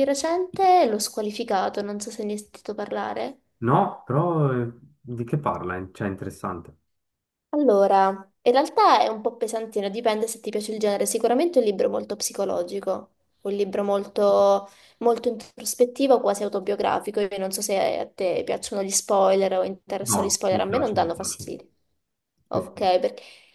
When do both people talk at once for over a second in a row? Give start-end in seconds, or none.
20.0-21.4